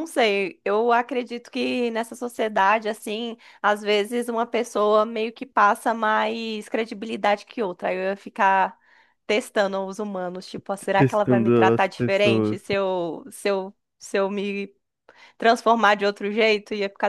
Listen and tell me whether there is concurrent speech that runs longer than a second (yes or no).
yes